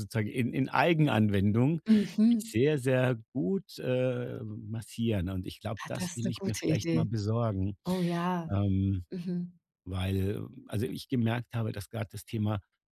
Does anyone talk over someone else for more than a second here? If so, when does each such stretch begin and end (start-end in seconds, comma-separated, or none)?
5.8-7.1